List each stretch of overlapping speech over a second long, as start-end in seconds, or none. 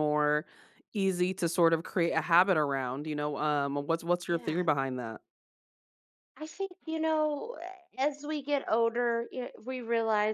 none